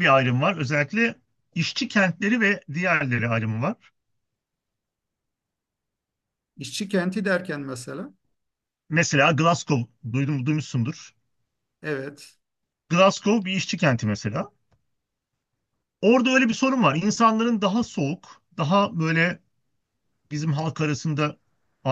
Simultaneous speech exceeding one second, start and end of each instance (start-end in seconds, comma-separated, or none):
none